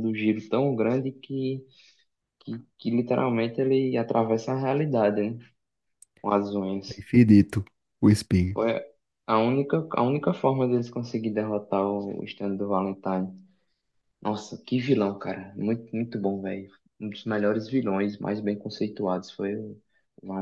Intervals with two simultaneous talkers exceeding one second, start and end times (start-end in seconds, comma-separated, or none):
none